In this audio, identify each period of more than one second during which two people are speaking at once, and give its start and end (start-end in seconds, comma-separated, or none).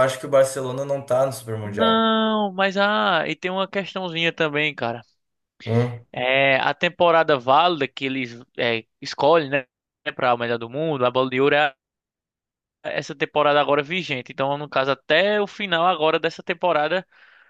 none